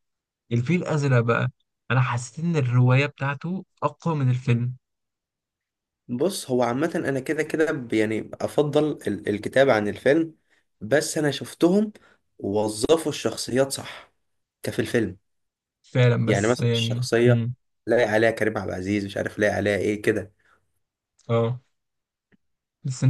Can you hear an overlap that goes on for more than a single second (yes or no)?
yes